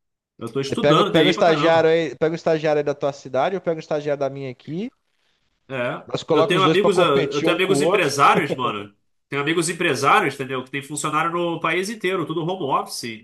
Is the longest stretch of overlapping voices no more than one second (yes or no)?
no